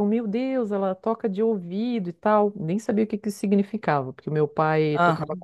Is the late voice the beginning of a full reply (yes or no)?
no